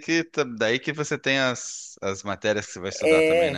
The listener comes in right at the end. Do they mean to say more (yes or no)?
yes